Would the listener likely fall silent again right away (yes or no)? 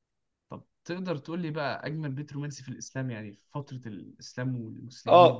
no